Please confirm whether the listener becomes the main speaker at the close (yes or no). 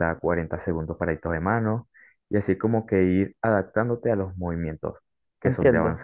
yes